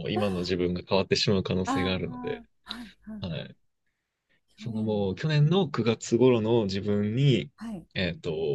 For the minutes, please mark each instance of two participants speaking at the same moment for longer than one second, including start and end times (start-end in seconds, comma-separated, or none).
none